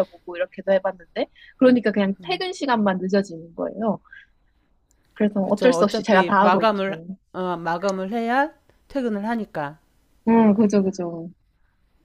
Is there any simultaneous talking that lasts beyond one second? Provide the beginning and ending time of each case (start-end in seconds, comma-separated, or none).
5.4-7.0